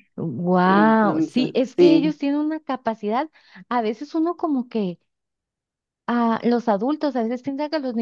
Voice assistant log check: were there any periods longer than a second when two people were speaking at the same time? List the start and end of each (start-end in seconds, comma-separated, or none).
0.6-2.1